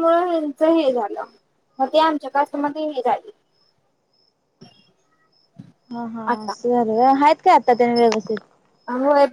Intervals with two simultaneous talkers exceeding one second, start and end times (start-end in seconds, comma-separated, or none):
none